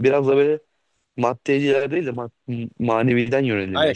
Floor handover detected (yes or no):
yes